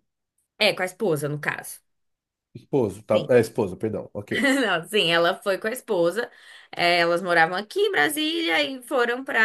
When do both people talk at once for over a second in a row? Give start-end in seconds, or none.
none